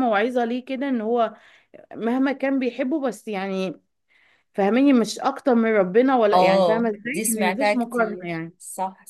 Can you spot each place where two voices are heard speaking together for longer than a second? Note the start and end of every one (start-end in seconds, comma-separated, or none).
6.3-8.5